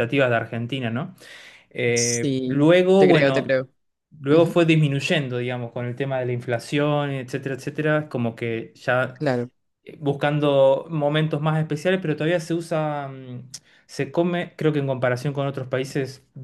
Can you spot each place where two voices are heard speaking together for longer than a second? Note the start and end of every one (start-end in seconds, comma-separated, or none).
1.9-3.5